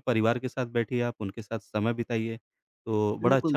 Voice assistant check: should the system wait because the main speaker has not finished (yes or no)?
no